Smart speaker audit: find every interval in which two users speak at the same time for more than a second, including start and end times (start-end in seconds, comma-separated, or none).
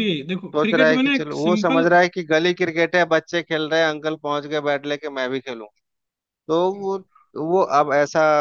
0.6-1.9